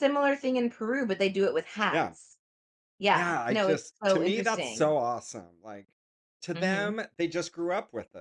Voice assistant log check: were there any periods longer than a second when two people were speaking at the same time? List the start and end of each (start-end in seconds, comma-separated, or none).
3.1-5.0